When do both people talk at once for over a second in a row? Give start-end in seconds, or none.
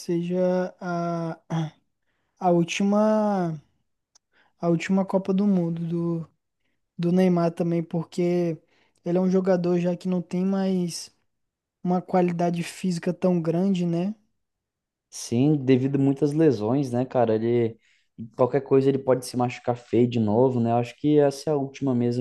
none